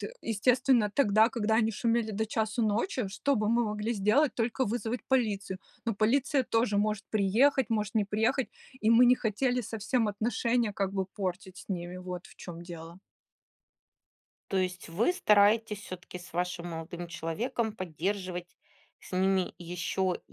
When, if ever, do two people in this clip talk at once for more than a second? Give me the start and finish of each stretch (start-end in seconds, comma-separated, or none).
none